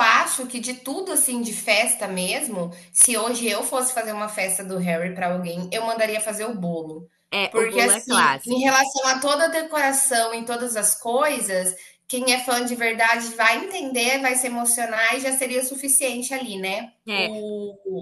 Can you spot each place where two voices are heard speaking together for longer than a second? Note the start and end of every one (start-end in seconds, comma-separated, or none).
7.5-8.8